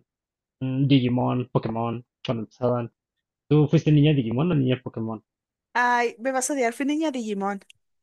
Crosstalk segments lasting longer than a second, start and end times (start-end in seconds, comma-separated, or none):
none